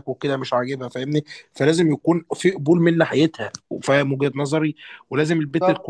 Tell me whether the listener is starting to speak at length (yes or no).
no